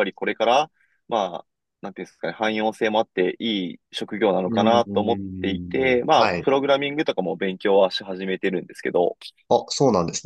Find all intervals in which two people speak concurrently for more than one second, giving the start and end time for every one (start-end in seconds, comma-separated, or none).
4.5-6.5